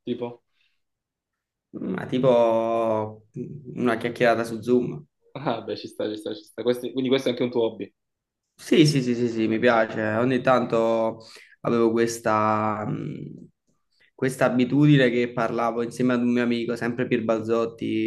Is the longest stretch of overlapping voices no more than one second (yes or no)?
yes